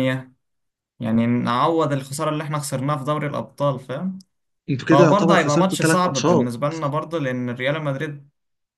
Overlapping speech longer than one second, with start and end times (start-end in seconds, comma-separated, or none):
4.9-6.5